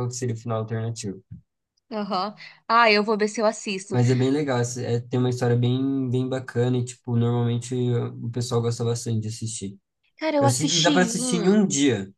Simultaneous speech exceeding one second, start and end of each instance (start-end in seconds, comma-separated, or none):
10.4-11.6